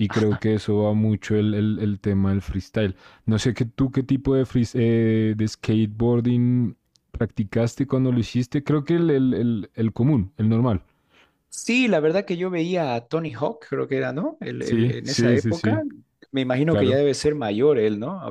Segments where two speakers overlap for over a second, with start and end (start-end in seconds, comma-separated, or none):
14.6-15.8